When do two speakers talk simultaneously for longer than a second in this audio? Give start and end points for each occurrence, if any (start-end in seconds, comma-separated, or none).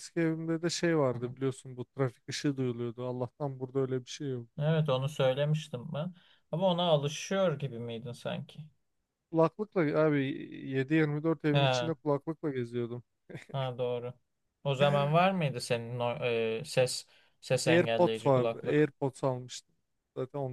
17.7-18.9